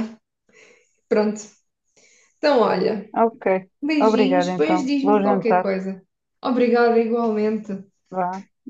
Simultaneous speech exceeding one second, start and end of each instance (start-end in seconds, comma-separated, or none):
3.8-5.7